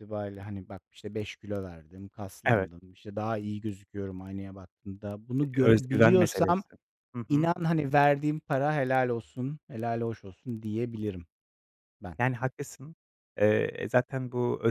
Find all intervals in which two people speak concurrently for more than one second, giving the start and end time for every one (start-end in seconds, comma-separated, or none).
5.4-6.6